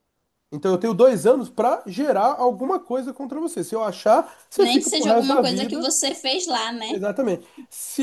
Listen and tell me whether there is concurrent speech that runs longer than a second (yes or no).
yes